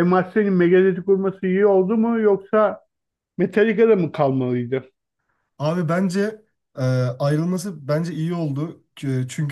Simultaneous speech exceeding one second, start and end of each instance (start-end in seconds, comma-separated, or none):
none